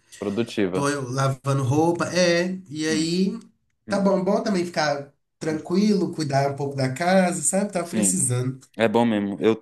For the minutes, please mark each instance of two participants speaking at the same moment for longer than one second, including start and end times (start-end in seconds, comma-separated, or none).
none